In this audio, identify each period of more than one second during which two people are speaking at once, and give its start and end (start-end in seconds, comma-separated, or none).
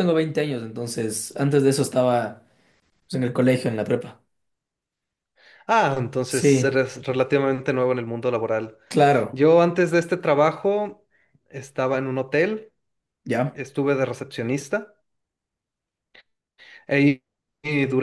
none